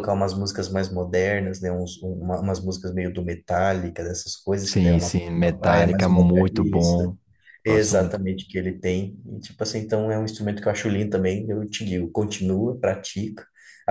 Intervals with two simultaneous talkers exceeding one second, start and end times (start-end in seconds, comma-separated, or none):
4.7-7.0